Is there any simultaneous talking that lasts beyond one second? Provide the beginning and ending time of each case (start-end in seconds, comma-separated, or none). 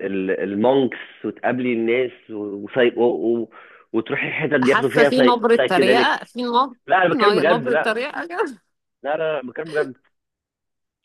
4.6-6.2